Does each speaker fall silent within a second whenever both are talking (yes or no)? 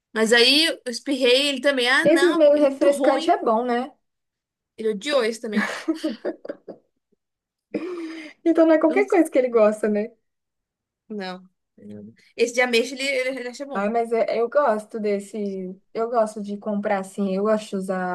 no